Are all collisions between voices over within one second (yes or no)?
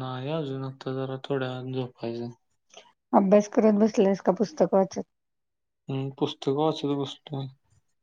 yes